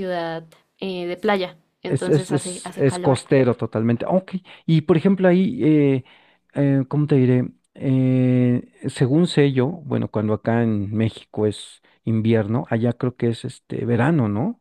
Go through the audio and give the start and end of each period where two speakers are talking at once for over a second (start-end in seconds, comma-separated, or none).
1.8-3.2